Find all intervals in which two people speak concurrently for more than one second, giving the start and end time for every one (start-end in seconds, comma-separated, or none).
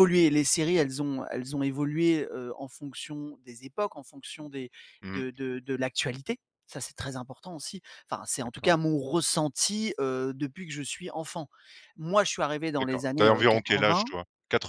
12.8-14.1